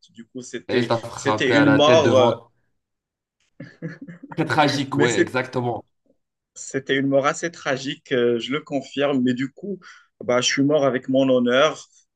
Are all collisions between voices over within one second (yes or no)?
no